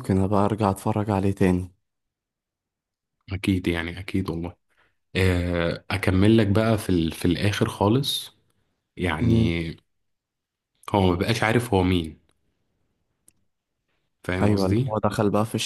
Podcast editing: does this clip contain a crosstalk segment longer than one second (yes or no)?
no